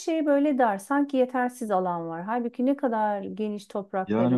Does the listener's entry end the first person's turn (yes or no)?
yes